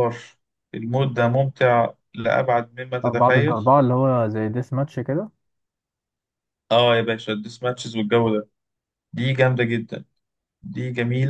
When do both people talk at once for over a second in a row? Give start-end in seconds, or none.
none